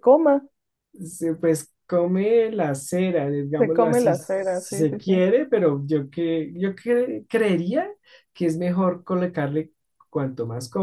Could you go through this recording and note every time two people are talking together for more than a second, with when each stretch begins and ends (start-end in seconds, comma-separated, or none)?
3.6-5.2